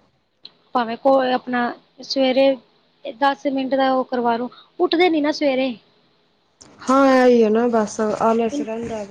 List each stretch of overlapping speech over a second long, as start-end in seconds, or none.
none